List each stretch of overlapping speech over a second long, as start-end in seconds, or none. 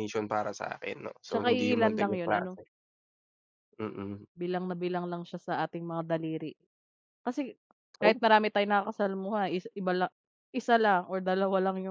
1.3-2.6